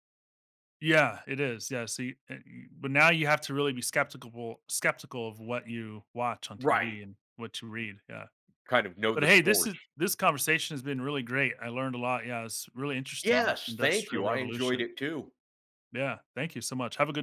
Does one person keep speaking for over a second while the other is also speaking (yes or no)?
yes